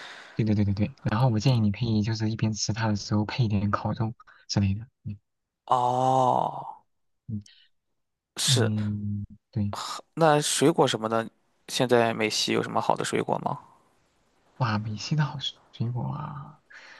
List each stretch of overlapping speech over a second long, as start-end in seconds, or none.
none